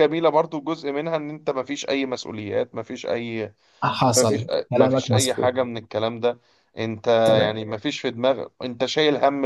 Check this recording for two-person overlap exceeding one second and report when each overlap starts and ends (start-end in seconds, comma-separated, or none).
4.1-5.5